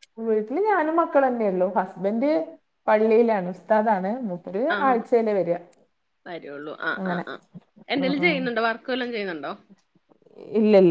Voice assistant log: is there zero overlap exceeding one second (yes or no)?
yes